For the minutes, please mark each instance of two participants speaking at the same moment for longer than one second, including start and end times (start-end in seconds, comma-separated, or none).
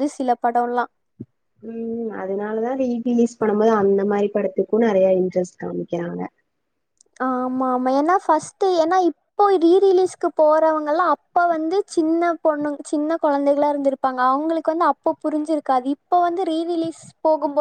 none